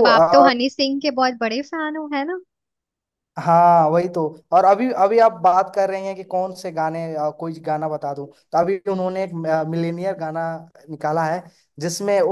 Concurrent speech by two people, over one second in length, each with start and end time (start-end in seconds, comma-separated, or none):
none